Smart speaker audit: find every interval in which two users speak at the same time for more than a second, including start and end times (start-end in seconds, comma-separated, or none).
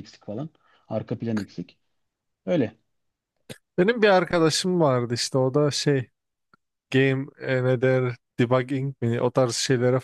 none